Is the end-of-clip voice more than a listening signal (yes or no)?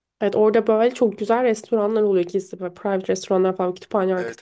no